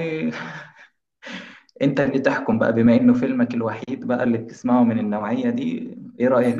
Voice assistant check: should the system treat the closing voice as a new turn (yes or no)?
yes